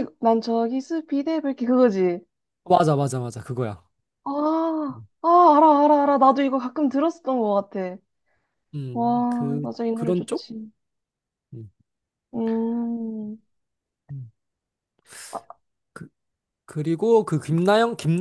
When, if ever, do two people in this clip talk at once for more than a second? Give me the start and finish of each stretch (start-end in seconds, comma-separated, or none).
8.9-10.5